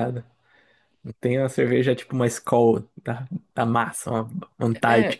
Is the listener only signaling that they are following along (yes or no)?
no